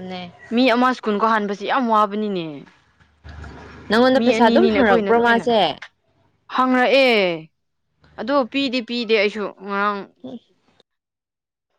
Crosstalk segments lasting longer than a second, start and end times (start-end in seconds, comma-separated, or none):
4.1-5.5